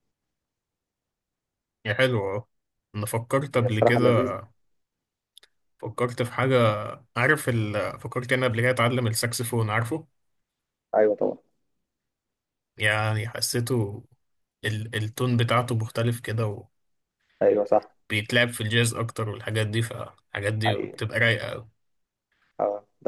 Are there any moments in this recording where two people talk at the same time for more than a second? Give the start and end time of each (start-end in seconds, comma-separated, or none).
none